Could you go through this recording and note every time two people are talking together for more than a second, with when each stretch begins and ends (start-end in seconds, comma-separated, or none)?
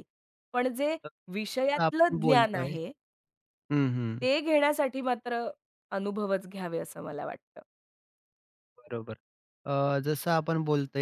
1.3-2.7